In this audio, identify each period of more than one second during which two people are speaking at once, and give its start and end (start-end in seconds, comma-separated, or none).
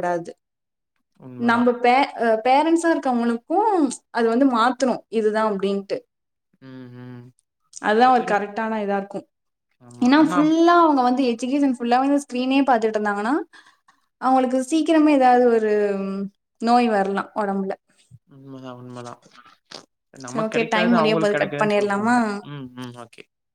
20.3-22.2